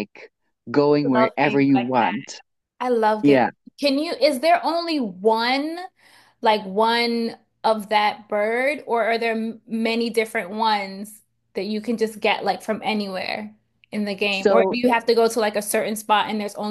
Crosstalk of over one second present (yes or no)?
yes